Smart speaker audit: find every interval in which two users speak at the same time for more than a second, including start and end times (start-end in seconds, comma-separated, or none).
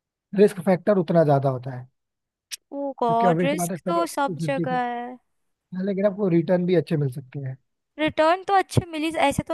3.1-4.8